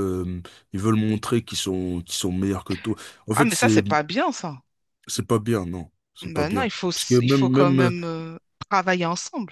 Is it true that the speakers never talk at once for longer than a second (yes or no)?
no